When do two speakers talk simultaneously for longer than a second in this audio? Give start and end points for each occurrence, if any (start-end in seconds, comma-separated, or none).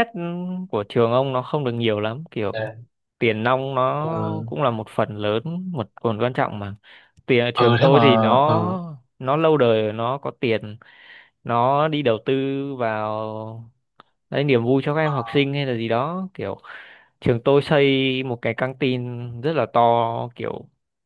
7.5-8.8